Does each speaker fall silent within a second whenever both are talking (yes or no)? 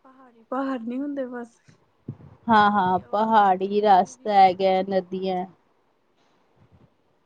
no